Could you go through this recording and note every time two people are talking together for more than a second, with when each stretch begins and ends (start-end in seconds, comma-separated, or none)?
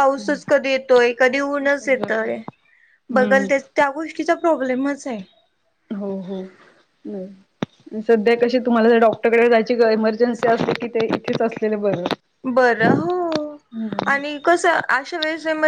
none